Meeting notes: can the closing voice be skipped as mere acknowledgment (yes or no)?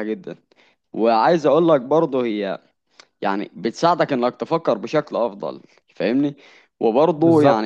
yes